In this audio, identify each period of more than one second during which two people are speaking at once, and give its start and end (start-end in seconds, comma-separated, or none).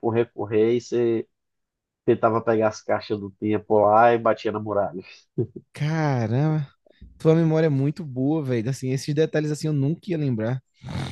none